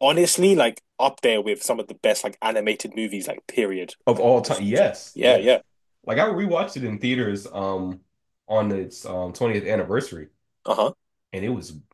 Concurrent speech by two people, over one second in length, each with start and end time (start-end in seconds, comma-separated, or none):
4.1-5.6